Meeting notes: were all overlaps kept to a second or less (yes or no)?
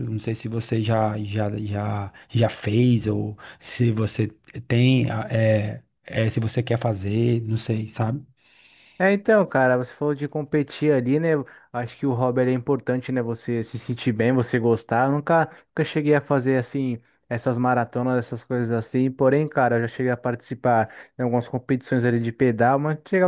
yes